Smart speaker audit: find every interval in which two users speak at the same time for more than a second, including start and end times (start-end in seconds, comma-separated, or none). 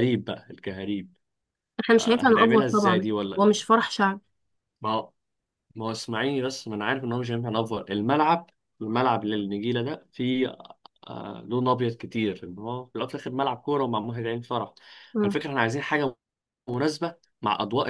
1.9-3.4